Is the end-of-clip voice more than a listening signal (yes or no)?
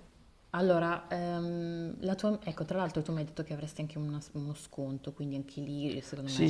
yes